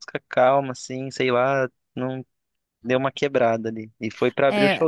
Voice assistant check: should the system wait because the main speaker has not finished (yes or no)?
no